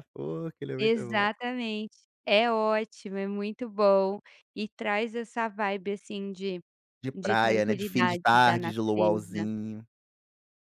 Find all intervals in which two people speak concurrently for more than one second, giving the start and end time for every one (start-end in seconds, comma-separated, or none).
7.2-9.5